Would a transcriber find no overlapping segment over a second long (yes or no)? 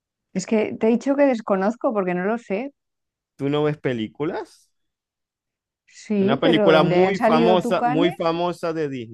no